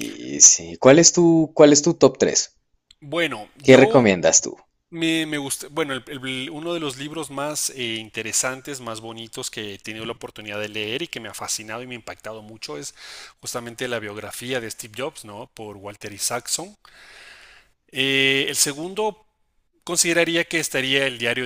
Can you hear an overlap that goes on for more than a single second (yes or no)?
no